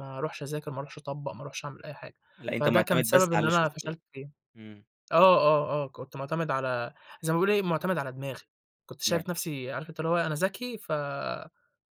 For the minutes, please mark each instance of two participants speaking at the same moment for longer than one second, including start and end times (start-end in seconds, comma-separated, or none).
2.5-4.0